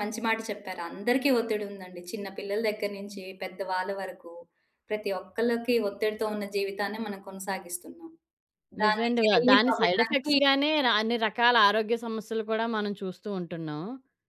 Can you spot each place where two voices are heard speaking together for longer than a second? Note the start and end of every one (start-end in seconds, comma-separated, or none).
8.8-10.3